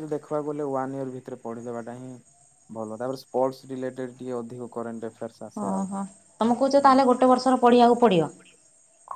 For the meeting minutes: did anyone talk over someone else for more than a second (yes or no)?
no